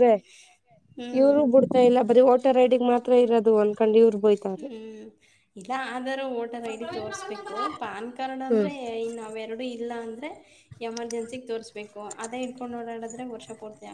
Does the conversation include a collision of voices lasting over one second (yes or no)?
no